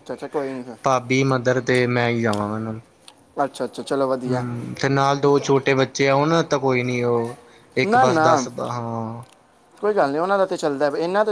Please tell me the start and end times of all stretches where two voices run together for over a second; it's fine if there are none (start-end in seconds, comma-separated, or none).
none